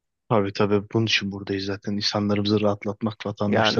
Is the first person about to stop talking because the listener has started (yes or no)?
yes